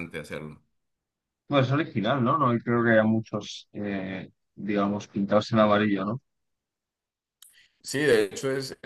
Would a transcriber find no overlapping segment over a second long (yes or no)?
yes